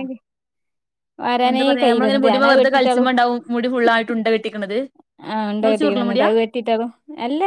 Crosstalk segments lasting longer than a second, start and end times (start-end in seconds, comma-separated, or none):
1.5-3.0